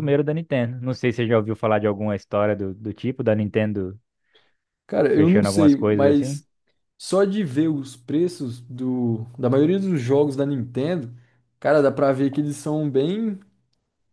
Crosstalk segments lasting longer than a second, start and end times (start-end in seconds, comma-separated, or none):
5.1-6.4